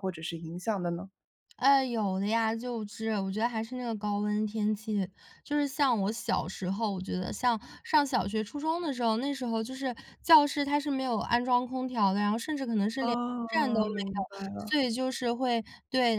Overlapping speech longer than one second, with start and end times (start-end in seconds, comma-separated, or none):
13.0-14.8